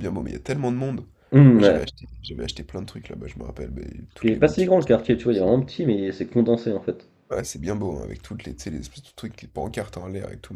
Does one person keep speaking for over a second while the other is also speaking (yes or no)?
yes